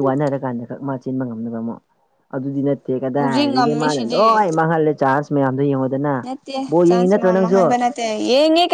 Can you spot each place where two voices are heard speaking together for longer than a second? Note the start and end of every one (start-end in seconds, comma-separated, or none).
3.2-4.4